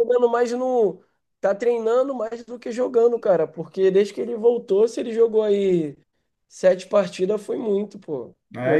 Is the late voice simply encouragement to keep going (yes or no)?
no